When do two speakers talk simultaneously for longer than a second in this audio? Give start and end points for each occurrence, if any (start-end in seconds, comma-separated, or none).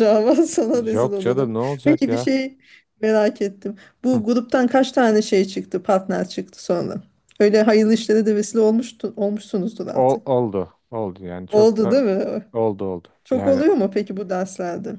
0.7-2.3